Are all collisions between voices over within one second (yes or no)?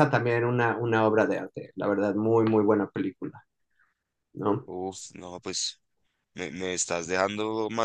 yes